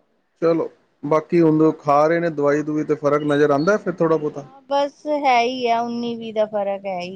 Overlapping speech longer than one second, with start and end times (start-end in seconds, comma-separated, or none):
none